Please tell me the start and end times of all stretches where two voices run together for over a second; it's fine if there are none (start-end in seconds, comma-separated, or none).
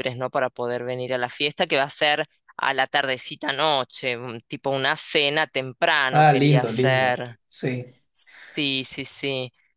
6.1-7.4